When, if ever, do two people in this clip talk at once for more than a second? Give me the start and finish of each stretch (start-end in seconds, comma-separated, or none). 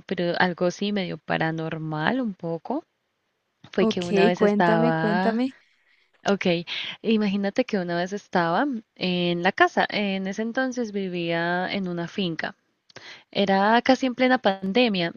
3.8-5.4